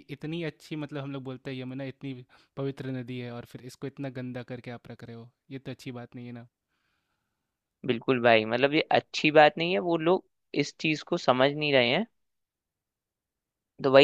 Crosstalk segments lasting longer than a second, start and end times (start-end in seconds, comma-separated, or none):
none